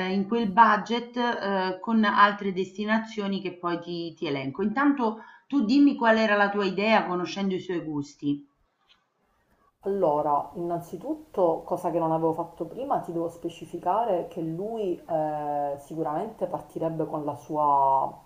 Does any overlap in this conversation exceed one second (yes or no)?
no